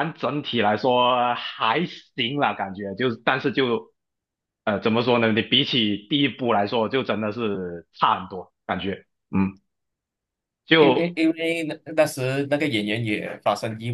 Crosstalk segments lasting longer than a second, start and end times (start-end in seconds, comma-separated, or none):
none